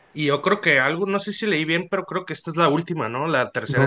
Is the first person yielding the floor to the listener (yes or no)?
yes